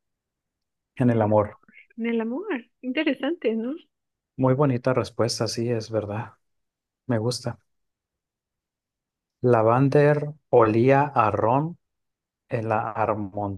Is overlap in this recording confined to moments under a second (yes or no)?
yes